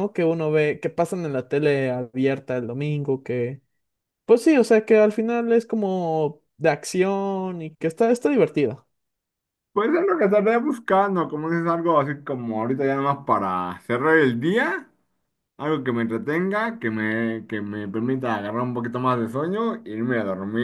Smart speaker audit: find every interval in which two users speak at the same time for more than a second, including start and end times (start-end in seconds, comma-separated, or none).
none